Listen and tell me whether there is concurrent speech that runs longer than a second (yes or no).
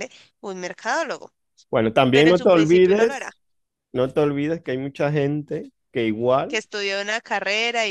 yes